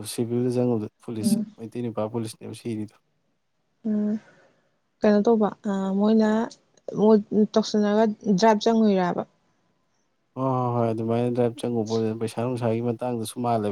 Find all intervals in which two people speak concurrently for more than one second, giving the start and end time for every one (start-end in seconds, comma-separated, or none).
none